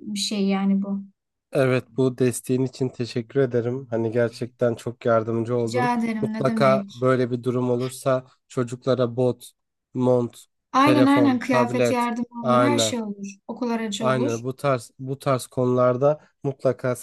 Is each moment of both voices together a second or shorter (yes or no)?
no